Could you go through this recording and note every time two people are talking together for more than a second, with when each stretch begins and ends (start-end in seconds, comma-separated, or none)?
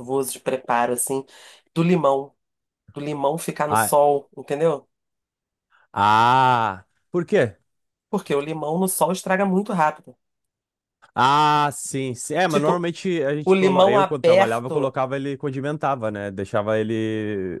13.4-14.9